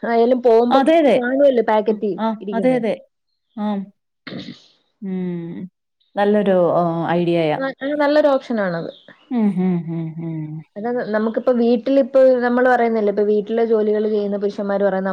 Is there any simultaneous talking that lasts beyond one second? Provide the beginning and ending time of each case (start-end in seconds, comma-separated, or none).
none